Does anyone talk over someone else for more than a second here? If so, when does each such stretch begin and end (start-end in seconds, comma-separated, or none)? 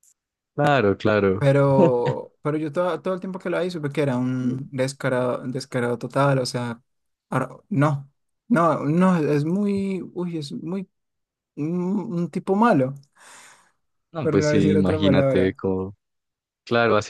14.2-15.6